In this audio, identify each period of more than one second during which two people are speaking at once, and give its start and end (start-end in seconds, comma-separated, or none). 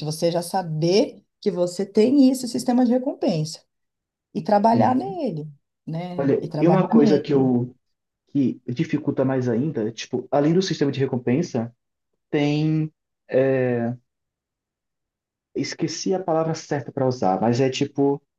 6.2-7.4